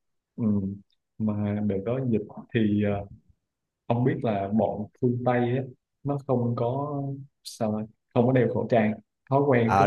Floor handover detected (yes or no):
yes